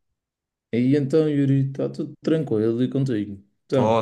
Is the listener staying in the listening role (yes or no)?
no